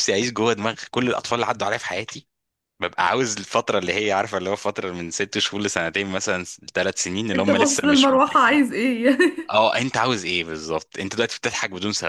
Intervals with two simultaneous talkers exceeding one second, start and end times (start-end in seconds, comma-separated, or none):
7.3-8.6